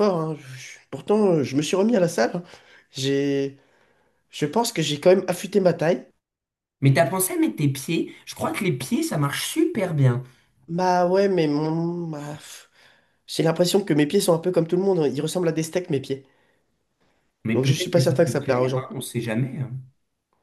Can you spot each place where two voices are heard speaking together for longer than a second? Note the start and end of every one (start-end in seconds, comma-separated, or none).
17.5-18.9